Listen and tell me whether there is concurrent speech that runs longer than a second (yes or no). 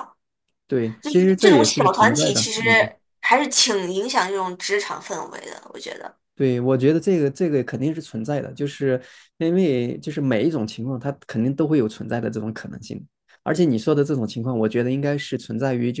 yes